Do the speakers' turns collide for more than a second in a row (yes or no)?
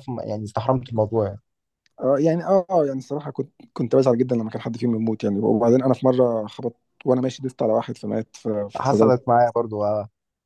no